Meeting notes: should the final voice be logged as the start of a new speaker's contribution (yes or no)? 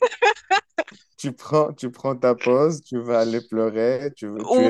yes